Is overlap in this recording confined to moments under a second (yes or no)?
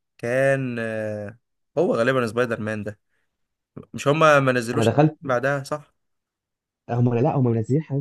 yes